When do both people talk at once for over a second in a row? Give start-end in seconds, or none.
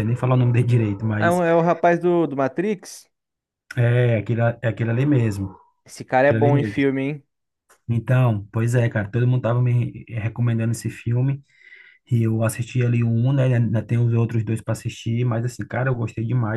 none